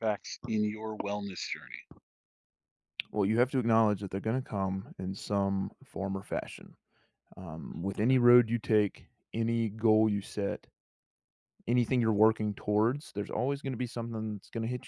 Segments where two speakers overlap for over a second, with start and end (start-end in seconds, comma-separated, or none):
none